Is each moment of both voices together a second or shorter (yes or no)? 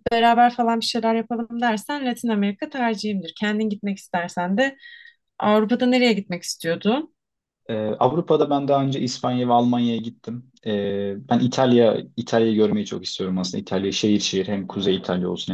yes